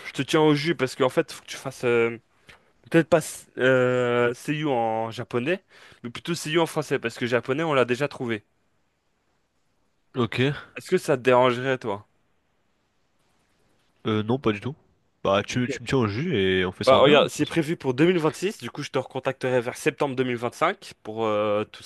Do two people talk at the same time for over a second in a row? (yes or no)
no